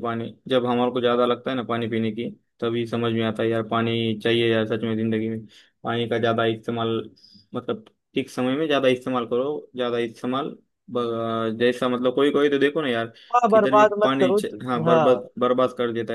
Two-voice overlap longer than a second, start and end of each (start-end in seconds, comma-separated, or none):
13.5-15.2